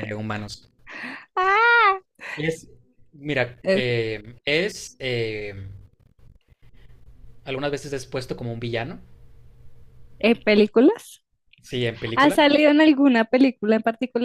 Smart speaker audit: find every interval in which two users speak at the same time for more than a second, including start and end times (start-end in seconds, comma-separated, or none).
none